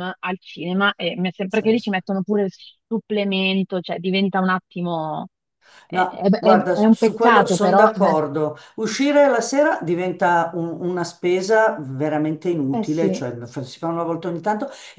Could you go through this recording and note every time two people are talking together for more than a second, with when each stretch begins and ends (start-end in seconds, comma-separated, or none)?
5.9-8.2